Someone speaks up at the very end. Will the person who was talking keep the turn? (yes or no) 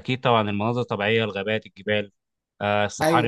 yes